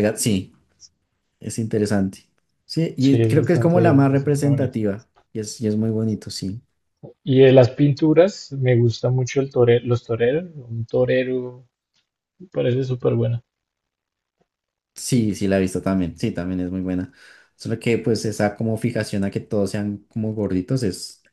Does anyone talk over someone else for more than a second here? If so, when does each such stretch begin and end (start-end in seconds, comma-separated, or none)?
3.0-4.8